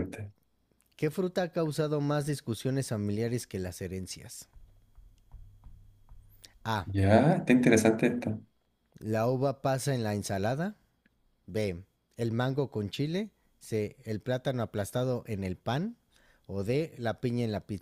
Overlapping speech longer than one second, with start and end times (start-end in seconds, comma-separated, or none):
none